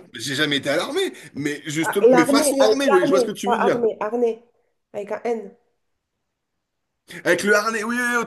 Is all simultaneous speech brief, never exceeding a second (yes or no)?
no